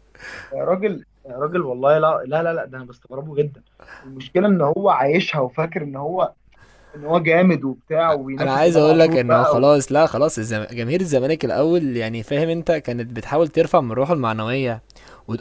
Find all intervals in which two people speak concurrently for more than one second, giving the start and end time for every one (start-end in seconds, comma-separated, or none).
8.4-9.7